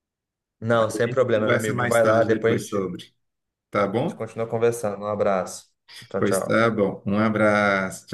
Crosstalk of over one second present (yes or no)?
yes